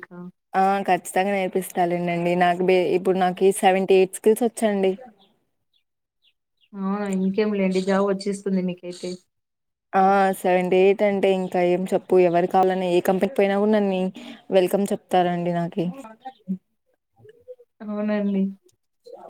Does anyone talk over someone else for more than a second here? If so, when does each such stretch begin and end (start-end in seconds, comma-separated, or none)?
none